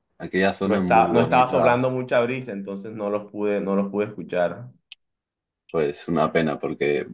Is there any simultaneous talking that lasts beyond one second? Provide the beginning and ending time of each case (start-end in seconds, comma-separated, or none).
0.6-1.8